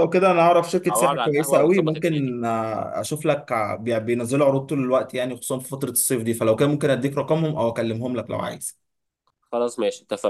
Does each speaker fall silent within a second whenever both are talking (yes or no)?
no